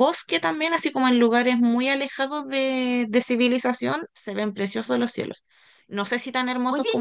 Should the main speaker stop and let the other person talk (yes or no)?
no